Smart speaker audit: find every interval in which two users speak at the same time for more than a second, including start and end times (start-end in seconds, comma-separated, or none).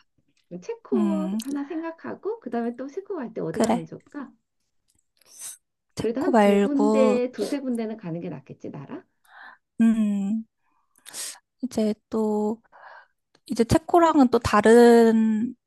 6.0-7.2